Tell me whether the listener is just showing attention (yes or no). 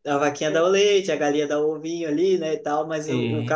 yes